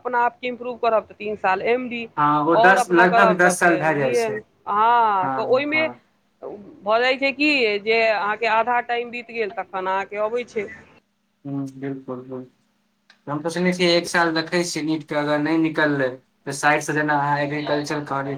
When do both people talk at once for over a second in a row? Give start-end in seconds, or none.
2.6-4.3